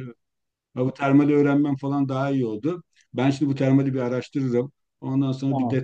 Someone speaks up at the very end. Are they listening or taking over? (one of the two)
listening